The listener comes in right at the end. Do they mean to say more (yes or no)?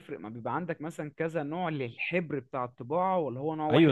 yes